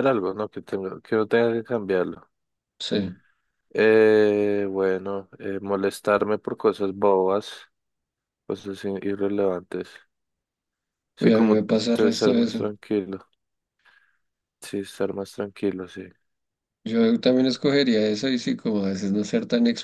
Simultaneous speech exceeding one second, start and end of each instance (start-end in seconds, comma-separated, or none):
11.2-12.7